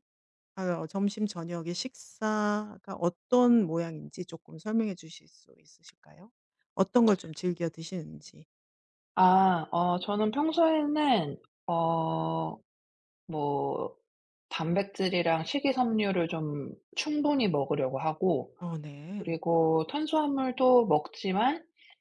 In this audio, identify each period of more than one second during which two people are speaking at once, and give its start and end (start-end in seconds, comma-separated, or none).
none